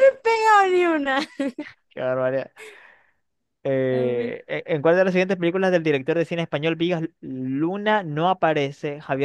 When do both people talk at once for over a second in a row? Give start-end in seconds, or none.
none